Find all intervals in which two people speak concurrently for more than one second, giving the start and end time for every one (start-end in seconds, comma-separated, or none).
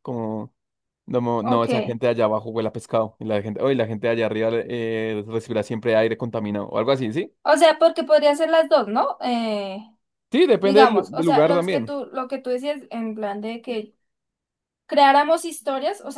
10.6-11.9